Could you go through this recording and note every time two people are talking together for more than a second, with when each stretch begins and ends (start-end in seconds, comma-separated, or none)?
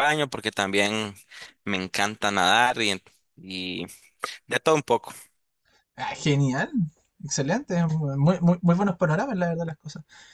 none